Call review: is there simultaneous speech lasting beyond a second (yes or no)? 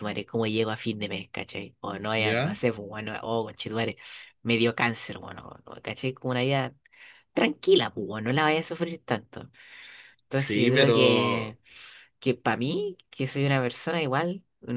yes